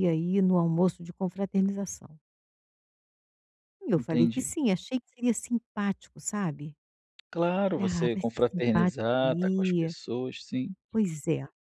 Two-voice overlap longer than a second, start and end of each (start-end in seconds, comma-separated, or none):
7.8-9.9